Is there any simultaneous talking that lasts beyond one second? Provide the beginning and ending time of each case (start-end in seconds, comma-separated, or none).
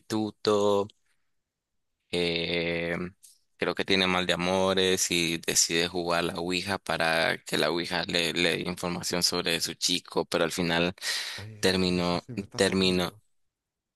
11.6-13.1